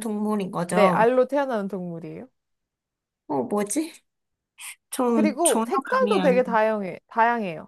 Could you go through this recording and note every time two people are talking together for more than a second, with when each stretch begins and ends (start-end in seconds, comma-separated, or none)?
5.1-6.4